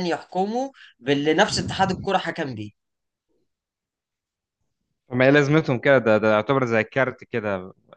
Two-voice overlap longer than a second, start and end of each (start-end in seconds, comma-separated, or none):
none